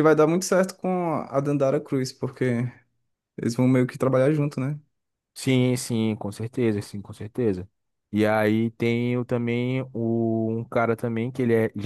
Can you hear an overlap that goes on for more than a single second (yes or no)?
no